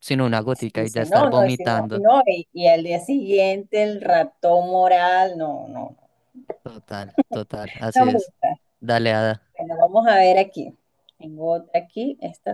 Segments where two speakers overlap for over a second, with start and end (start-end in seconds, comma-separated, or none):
0.6-2.0